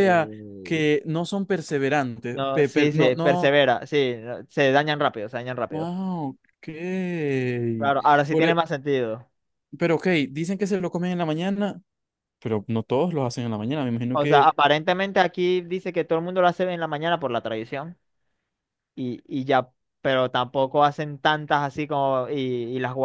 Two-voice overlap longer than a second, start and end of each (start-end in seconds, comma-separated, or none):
2.3-3.5